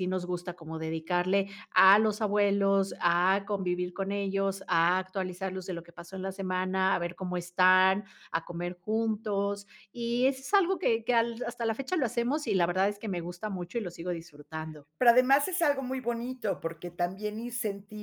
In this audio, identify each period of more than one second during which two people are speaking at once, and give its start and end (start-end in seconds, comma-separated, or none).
none